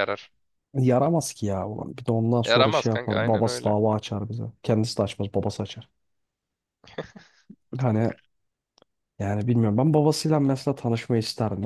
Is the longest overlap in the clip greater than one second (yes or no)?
yes